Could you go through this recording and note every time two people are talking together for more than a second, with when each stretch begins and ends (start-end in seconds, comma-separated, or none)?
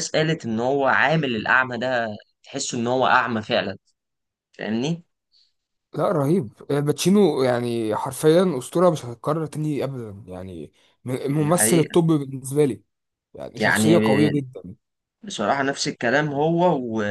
none